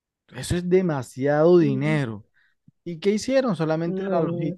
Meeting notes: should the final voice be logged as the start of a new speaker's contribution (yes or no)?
no